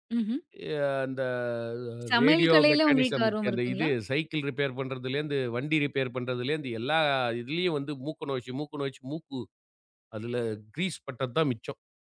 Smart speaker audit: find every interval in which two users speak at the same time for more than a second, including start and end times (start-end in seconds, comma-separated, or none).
2.2-3.9